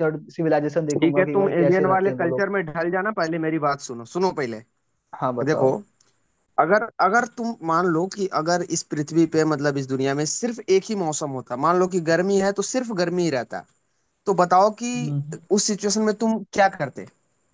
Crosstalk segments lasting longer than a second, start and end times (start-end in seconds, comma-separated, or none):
0.9-2.5